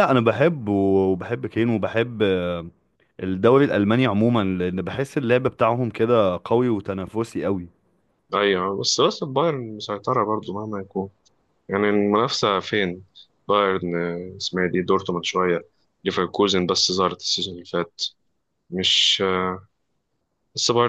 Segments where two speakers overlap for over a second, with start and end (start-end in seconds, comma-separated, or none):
none